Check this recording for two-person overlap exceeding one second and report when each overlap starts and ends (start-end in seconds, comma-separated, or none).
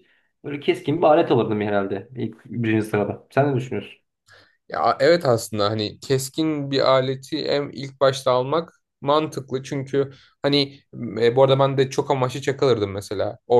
none